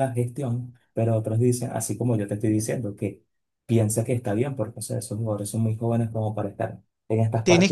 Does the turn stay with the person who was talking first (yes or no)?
no